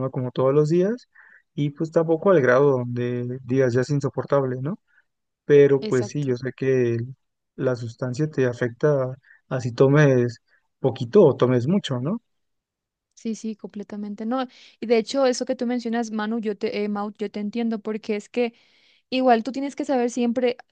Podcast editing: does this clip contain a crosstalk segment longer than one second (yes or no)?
no